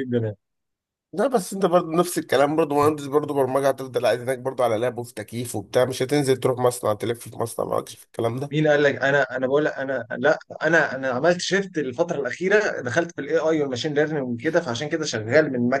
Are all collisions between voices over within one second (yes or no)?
yes